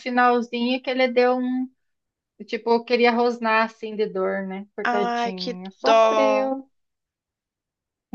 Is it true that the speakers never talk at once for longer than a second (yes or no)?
no